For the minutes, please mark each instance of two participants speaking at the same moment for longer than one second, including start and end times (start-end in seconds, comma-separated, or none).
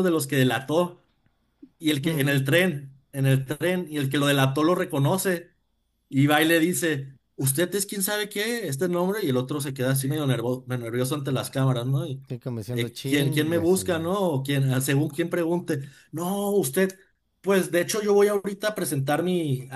12.7-14.1